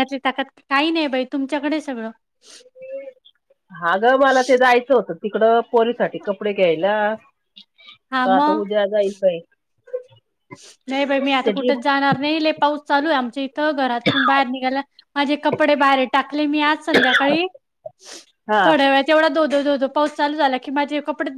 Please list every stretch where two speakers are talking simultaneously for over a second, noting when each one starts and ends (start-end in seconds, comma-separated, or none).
none